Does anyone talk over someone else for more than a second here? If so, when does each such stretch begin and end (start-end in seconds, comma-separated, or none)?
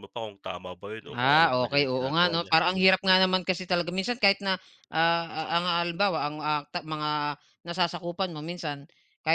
1.1-3.1